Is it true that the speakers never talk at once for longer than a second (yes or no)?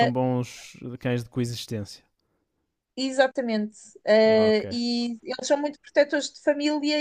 yes